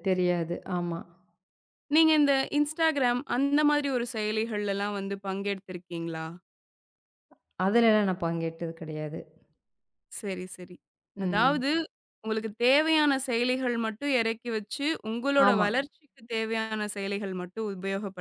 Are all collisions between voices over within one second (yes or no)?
yes